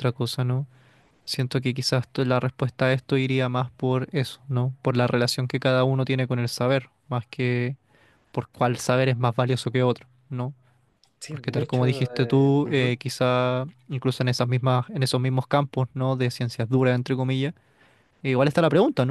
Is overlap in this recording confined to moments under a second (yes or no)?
no